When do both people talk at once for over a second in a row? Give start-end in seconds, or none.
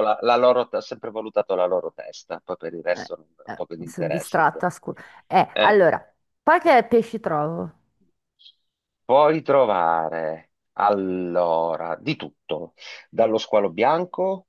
2.9-4.7